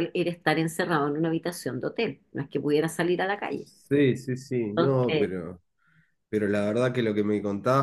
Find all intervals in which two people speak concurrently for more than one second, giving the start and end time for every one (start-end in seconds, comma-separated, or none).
none